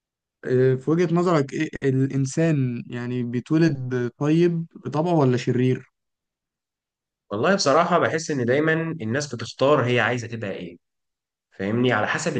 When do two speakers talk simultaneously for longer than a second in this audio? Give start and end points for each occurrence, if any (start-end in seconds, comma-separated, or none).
none